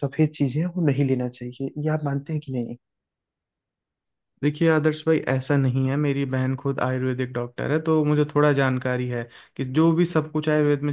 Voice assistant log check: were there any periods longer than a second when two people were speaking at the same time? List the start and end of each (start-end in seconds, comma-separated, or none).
none